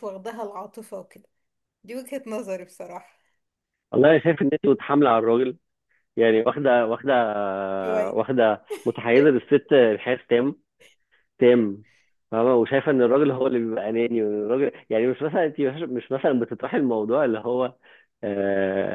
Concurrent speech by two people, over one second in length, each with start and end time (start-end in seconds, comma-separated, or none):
none